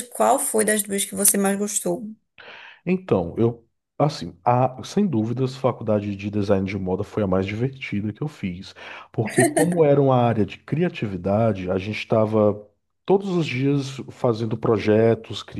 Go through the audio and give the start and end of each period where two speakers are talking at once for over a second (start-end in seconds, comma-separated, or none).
none